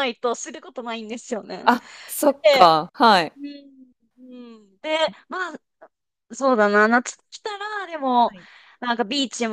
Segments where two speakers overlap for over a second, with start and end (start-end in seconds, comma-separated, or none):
none